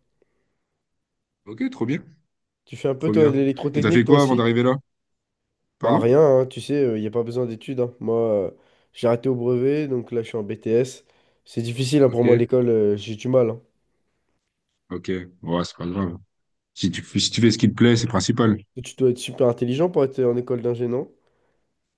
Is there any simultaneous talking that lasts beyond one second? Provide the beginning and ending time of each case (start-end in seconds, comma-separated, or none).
3.0-4.5